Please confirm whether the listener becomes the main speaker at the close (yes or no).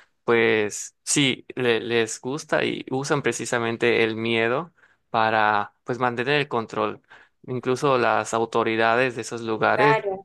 no